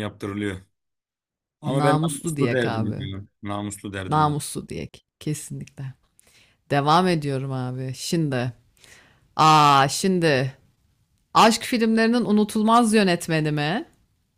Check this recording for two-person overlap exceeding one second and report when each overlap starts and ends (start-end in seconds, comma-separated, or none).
1.7-3.1